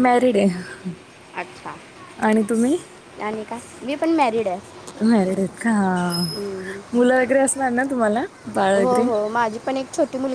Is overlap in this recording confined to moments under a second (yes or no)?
yes